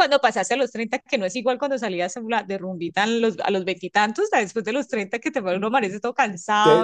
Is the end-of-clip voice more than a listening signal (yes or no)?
yes